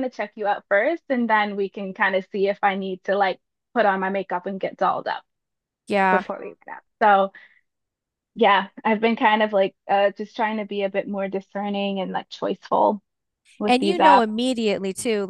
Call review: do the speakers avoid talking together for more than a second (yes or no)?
yes